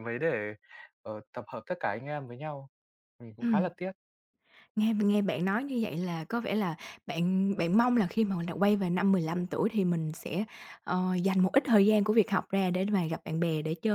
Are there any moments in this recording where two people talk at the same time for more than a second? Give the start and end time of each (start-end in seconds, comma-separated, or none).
none